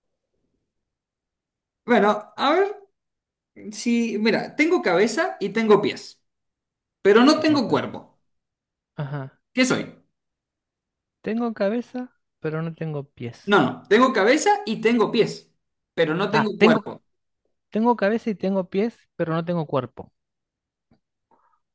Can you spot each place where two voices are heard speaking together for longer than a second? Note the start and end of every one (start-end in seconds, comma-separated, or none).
none